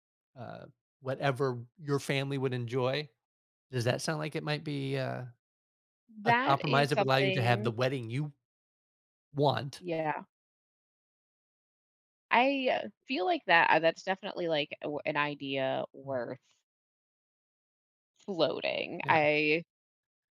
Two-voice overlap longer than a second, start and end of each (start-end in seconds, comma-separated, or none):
6.2-7.7